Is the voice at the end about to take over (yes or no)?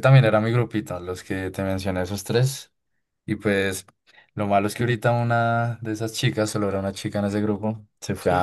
no